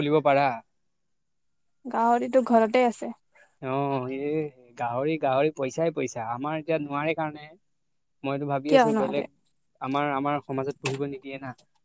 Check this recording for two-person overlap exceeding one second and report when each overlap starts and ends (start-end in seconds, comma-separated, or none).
none